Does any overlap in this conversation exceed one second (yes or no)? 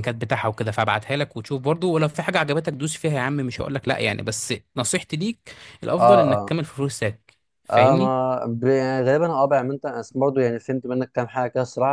no